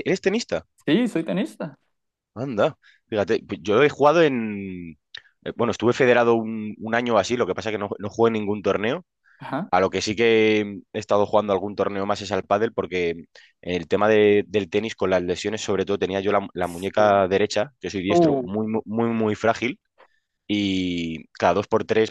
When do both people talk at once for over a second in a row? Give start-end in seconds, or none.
none